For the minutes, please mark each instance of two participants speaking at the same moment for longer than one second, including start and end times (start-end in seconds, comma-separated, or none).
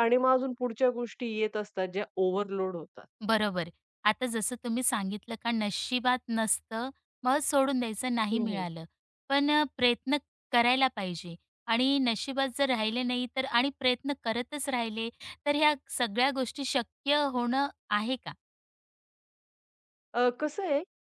none